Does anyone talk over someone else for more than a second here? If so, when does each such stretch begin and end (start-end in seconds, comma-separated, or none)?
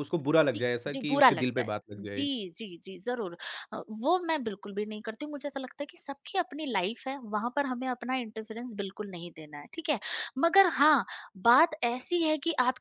0.5-2.2